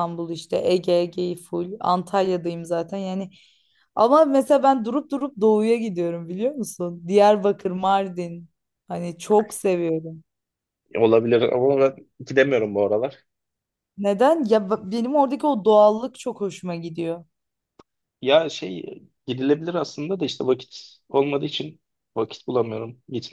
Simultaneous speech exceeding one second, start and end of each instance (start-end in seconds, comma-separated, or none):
none